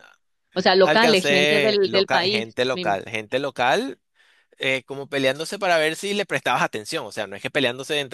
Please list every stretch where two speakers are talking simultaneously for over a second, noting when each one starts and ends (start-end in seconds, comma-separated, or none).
0.8-3.0